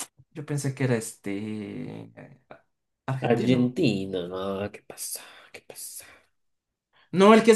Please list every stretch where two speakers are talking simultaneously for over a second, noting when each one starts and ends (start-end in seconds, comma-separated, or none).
none